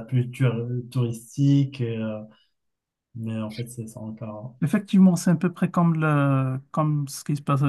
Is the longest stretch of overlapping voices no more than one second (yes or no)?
yes